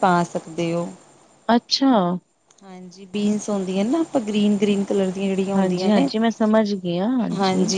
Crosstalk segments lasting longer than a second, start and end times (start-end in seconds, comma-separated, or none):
none